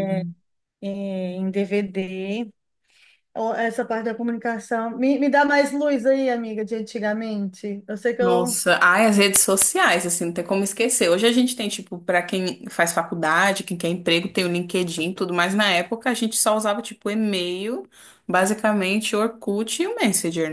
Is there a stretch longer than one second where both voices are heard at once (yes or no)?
no